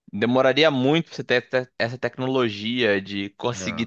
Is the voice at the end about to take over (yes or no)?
no